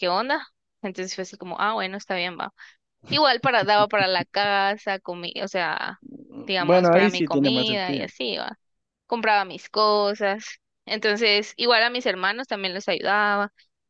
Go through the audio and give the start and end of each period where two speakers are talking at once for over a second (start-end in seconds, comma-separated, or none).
6.6-8.1